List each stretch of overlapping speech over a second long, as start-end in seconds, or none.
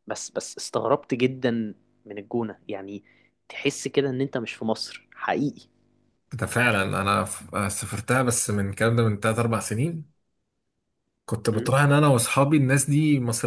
none